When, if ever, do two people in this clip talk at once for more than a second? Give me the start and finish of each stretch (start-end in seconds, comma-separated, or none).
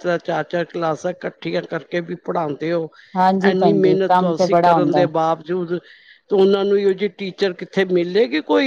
3.5-5.0